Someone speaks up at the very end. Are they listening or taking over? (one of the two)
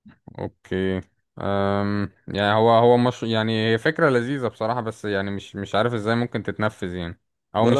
listening